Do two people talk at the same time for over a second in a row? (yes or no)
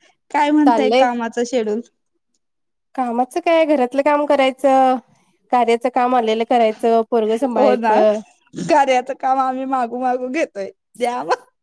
no